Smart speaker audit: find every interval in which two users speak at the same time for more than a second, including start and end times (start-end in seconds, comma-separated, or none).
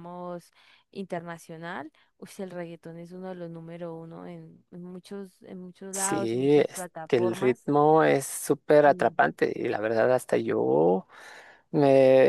5.9-7.7